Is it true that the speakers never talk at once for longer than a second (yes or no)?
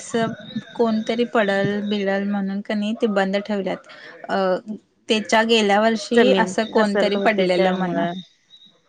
no